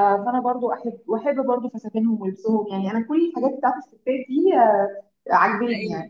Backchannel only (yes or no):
yes